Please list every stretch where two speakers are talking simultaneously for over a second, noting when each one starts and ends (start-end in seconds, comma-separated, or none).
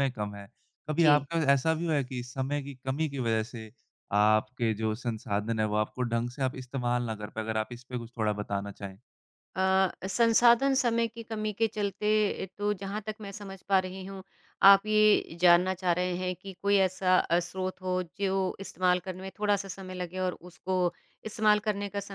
none